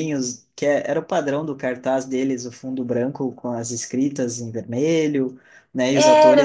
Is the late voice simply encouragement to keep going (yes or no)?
yes